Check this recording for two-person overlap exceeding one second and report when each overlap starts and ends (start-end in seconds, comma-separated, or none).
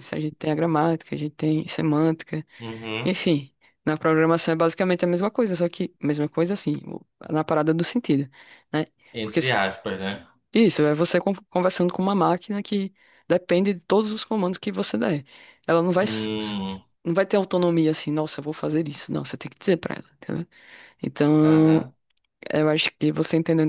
none